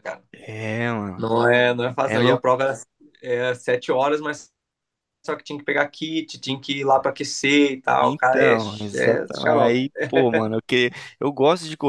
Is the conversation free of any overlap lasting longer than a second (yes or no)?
no